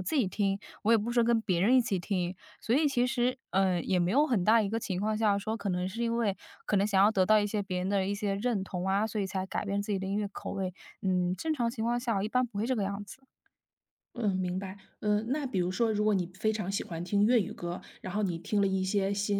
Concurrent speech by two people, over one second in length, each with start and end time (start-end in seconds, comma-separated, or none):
none